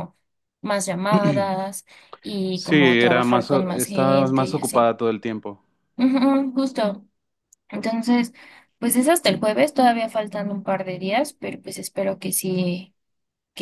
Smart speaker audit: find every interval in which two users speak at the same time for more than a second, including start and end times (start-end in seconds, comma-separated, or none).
2.5-4.9